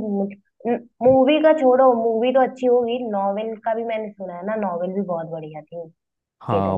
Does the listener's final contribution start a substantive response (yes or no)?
yes